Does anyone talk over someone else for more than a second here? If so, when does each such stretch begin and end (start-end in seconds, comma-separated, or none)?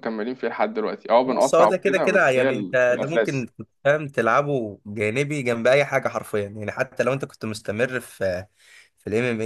1.3-3.5